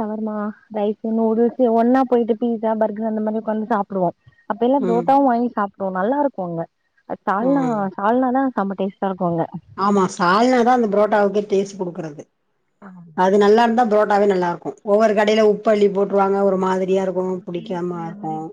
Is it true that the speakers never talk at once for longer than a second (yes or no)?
yes